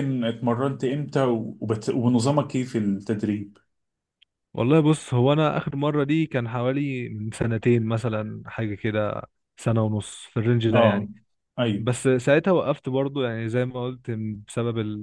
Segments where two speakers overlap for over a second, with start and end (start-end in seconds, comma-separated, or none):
none